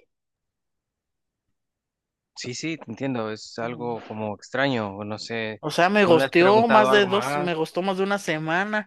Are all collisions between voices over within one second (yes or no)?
no